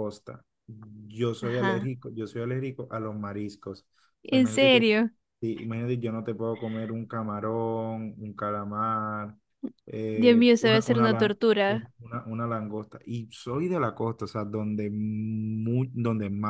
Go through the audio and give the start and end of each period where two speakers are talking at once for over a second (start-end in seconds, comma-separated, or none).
10.1-11.9